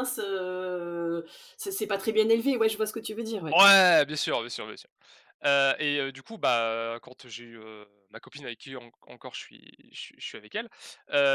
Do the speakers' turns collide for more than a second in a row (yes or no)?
no